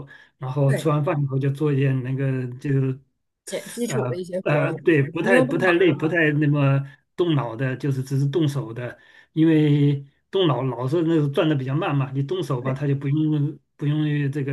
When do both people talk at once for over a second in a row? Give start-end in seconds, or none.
3.9-5.7